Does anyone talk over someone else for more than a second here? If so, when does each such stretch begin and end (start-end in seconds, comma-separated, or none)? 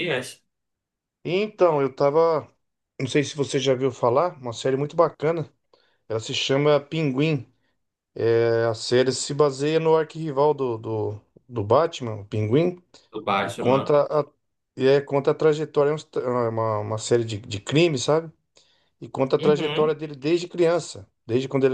none